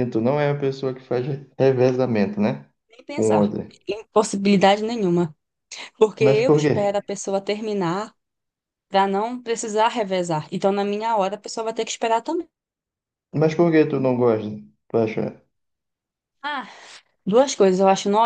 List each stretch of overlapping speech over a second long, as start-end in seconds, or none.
none